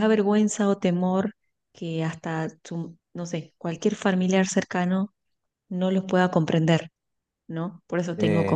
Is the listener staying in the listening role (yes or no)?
yes